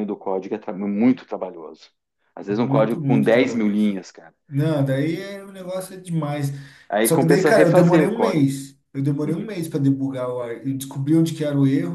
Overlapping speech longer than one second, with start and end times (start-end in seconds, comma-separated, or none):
2.5-4.0, 7.0-8.4